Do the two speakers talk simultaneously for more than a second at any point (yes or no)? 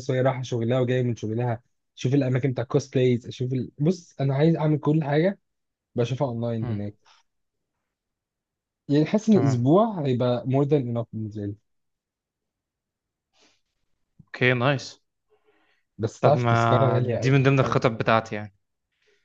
yes